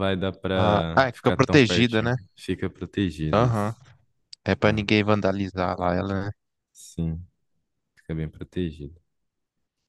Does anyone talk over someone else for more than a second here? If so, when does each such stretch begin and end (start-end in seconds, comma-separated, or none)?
0.5-2.1